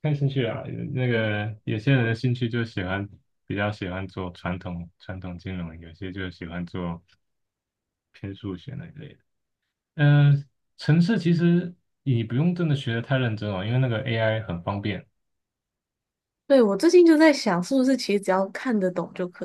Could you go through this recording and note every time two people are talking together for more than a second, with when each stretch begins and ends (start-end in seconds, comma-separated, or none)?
none